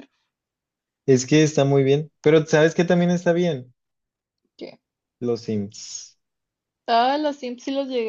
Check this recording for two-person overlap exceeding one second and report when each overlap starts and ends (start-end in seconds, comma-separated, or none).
none